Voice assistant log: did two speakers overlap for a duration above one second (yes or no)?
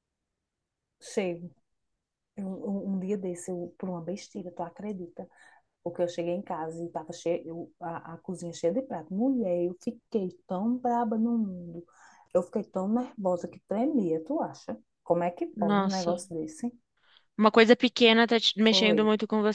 no